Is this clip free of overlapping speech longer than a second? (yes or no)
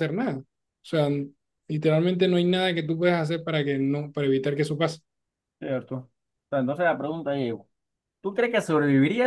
yes